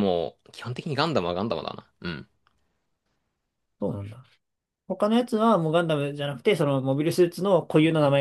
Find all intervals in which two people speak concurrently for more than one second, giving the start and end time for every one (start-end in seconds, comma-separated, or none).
none